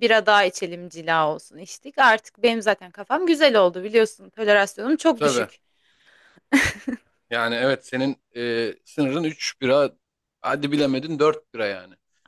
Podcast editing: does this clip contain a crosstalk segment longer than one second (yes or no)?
no